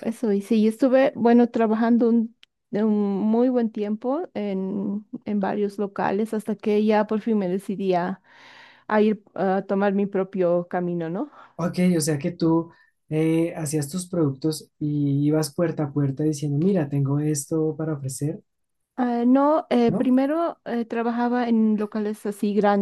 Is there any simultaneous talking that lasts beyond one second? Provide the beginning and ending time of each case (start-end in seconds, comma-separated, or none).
none